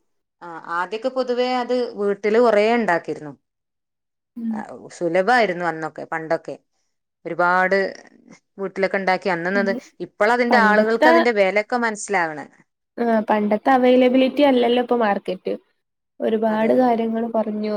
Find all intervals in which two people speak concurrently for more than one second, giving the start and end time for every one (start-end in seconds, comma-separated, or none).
none